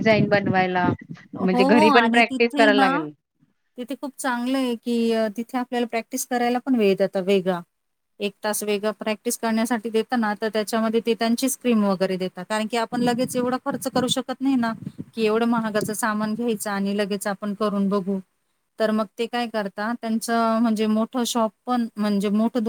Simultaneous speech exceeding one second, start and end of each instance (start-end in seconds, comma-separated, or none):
1.4-2.9